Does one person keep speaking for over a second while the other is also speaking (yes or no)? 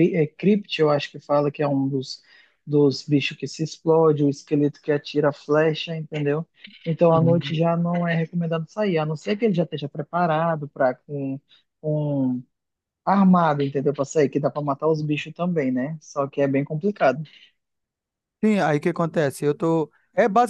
no